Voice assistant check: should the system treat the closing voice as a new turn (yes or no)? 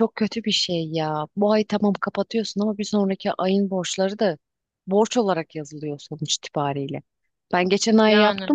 no